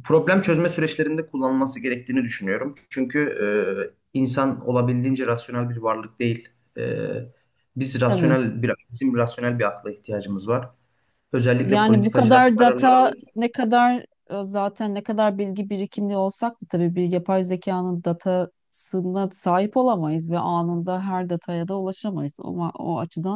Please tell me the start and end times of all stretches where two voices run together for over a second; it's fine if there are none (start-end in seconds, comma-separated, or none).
11.6-13.3